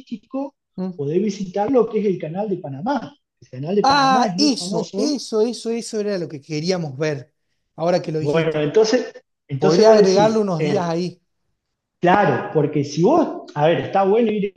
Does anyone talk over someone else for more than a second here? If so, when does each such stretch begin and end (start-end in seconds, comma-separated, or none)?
3.8-5.2, 9.6-10.9